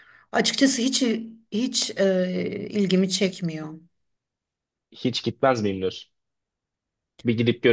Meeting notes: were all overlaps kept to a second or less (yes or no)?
yes